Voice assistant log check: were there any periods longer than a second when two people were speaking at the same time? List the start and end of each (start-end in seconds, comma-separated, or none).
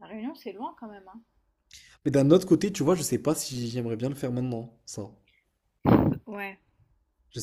none